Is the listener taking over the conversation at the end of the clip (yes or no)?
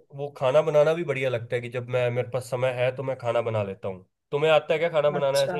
yes